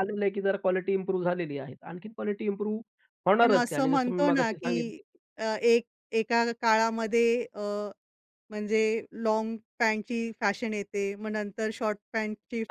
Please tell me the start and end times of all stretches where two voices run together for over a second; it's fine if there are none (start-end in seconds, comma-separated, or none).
3.4-4.8